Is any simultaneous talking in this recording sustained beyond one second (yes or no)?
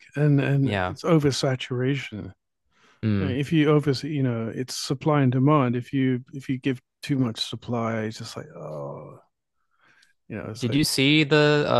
no